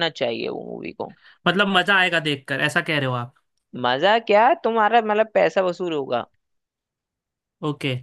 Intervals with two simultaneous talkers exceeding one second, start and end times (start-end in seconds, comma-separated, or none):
none